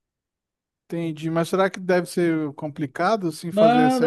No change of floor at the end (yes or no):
no